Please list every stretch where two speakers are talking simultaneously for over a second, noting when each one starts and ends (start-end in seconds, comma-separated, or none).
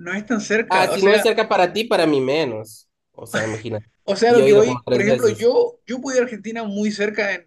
4.3-5.5